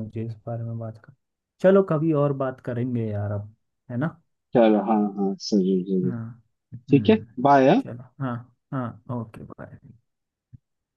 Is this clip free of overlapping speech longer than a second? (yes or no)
yes